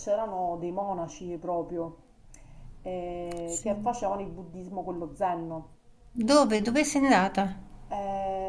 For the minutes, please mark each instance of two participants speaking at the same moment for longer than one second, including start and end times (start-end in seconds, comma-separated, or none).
none